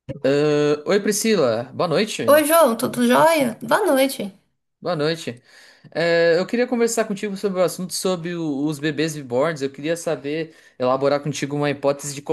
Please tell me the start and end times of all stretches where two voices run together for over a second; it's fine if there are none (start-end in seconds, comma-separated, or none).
none